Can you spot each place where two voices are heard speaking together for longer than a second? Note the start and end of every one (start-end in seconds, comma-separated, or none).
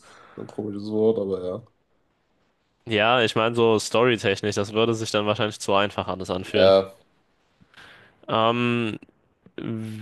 none